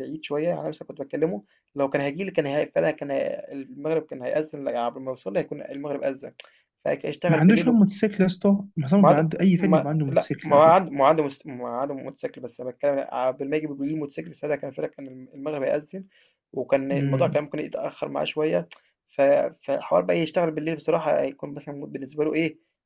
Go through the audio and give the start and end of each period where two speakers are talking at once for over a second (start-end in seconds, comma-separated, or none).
9.0-10.8